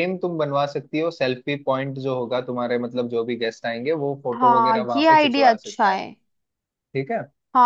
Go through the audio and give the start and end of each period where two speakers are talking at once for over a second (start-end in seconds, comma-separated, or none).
4.4-6.0